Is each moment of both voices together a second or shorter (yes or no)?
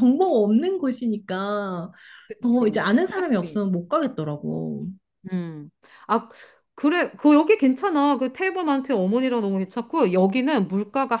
no